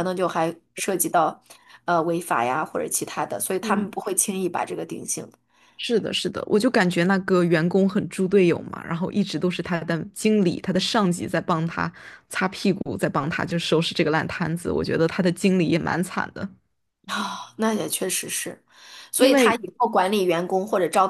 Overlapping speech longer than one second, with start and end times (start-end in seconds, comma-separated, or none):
none